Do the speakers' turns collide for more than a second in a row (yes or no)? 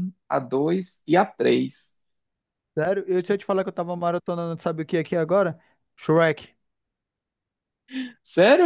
no